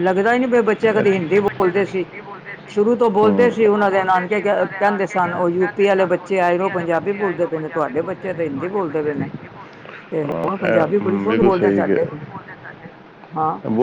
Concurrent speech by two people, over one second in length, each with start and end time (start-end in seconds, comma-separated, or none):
10.3-12.0